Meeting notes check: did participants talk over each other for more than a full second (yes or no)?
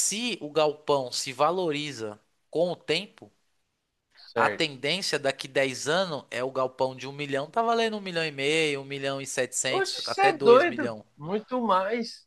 yes